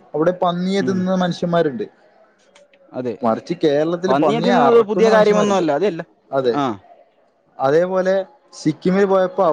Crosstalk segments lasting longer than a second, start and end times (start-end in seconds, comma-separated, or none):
4.1-5.6